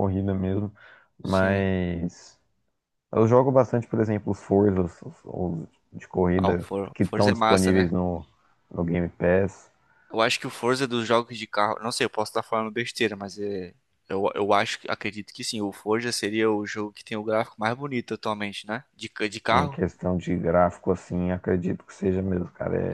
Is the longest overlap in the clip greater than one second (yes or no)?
yes